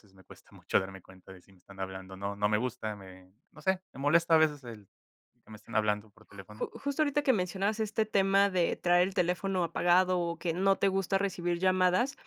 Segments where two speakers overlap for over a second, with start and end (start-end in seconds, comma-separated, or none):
none